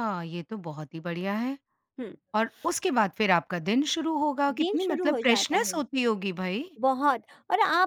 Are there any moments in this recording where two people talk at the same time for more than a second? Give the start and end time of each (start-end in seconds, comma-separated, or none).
4.5-5.8